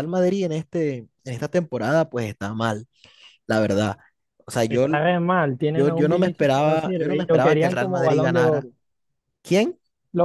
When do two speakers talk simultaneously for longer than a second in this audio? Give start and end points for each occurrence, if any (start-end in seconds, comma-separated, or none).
5.7-8.7